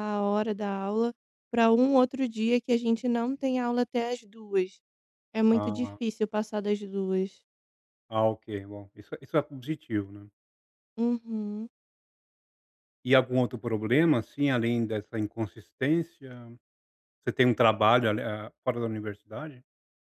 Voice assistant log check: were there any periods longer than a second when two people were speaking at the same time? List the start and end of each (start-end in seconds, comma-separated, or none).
none